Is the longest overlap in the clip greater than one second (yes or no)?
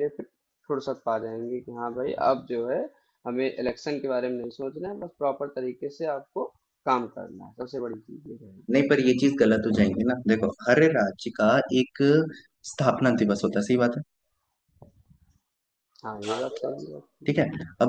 no